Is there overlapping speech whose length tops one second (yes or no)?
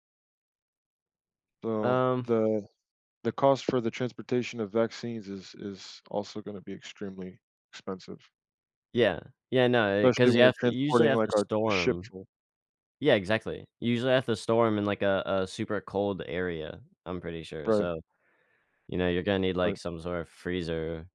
yes